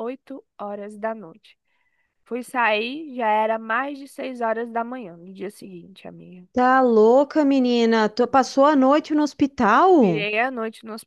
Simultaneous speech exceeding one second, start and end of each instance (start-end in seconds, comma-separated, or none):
none